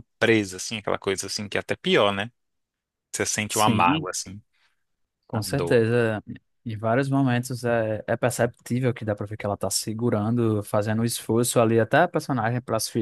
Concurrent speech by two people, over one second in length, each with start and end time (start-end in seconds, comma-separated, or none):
none